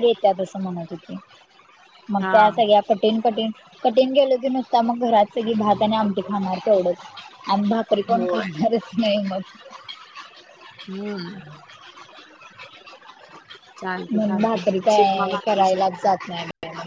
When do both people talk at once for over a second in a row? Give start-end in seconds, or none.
14.1-15.9